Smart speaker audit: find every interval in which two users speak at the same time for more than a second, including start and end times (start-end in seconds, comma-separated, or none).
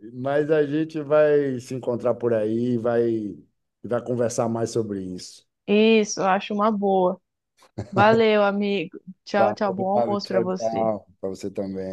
9.4-10.9